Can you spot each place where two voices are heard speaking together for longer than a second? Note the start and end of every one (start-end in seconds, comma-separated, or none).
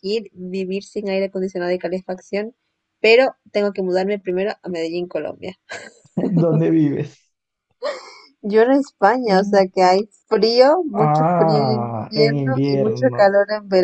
11.1-13.3